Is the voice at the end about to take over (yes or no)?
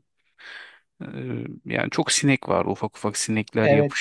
no